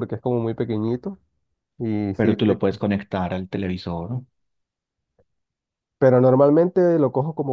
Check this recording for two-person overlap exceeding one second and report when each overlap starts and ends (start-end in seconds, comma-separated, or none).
none